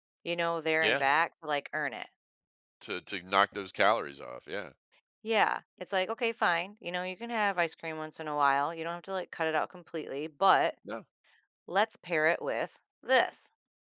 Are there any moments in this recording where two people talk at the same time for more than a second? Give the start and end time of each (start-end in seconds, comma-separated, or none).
none